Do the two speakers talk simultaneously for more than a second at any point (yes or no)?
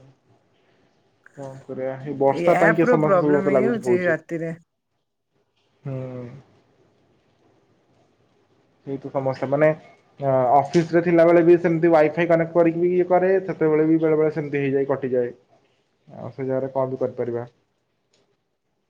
yes